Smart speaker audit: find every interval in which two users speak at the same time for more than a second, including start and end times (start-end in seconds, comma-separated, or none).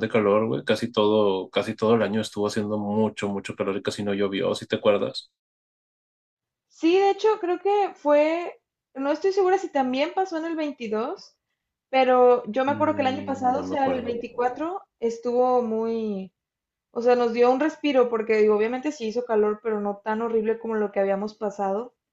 12.7-14.1